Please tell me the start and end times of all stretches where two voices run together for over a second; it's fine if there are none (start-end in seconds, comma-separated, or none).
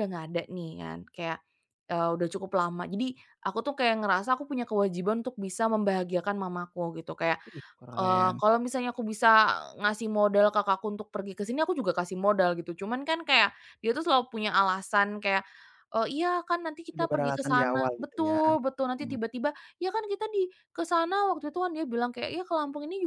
16.9-18.4